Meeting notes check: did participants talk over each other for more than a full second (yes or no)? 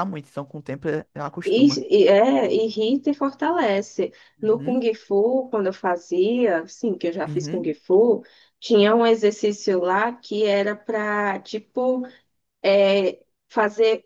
no